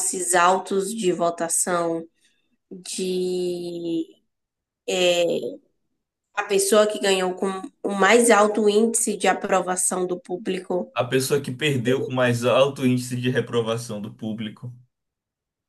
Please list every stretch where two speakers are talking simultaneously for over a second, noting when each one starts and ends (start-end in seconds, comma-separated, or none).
none